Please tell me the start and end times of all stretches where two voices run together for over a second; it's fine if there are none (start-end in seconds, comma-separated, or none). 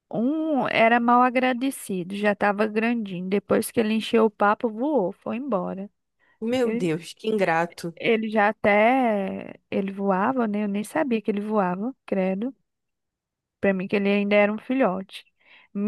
none